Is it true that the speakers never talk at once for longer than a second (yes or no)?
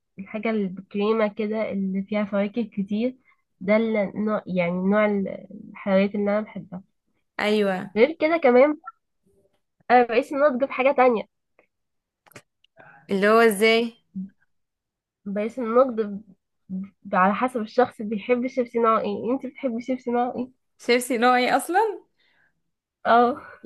yes